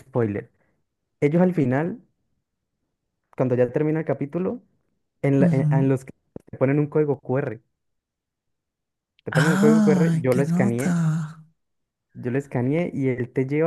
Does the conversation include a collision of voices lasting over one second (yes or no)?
yes